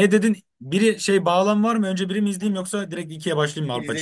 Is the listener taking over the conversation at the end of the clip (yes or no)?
yes